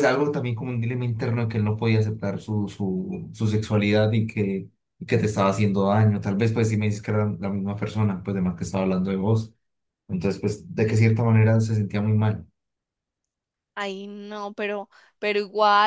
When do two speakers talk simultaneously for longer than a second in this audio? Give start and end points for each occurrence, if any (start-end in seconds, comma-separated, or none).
none